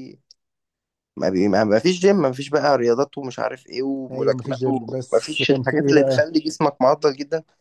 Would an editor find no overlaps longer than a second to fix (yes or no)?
no